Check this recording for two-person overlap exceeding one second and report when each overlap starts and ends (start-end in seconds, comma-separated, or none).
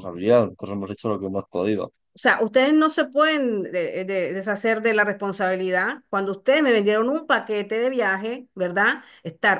none